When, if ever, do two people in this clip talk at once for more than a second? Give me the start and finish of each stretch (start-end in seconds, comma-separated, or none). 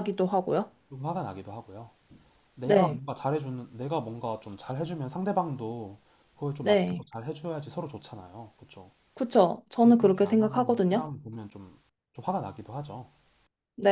9.8-11.2